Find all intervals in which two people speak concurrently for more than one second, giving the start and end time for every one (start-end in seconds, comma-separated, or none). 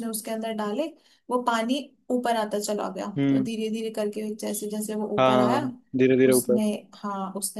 none